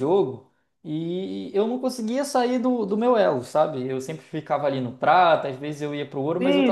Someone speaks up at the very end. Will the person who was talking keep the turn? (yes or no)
no